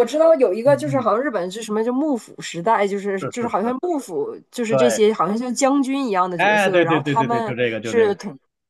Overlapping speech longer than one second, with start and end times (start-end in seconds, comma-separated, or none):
6.4-8.2